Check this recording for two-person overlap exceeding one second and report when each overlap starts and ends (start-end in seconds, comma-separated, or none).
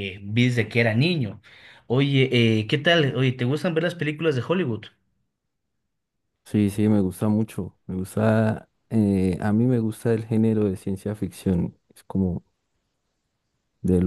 none